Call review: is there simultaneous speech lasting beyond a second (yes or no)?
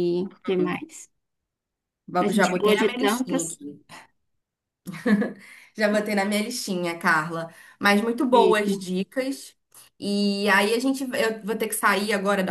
yes